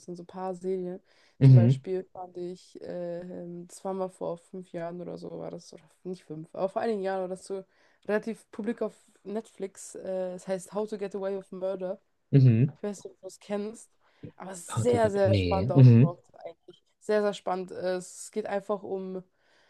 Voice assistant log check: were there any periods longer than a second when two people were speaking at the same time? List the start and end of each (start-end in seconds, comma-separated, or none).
14.7-16.2